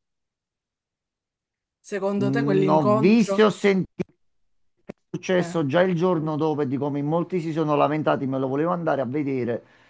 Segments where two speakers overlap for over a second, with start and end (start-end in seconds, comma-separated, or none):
2.2-3.4